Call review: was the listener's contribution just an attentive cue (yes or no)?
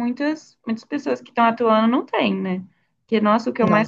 yes